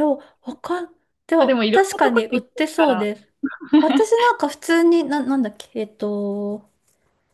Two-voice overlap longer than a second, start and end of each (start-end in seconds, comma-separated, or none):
1.4-3.1